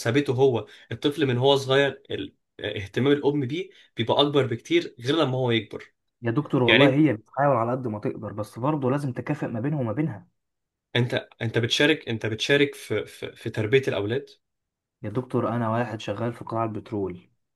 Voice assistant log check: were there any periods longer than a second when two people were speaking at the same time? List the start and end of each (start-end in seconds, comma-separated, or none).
none